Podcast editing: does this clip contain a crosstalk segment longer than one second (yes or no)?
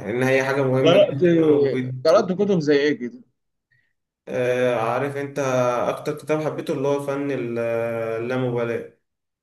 no